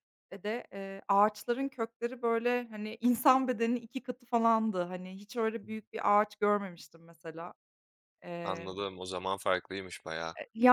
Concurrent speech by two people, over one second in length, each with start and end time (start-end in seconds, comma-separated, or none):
none